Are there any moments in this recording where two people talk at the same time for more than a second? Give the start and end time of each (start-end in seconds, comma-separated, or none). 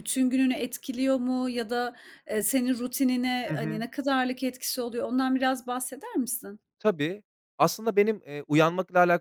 none